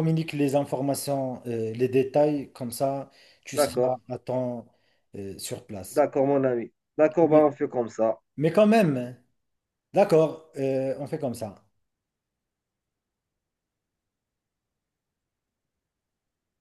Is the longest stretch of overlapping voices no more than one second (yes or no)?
yes